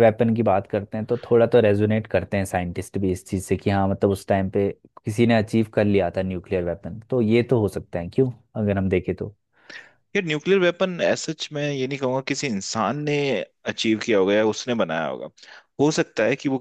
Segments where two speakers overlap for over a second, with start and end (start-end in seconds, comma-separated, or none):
none